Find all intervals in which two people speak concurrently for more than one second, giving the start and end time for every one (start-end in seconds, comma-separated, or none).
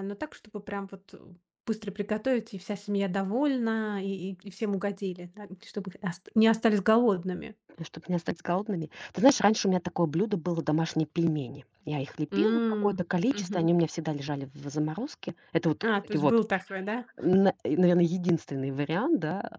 12.3-13.7